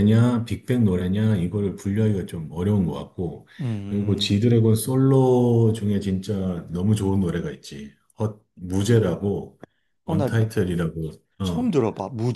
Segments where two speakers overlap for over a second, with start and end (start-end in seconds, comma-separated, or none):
none